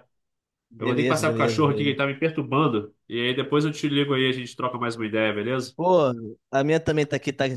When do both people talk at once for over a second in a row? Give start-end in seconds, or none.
0.8-2.0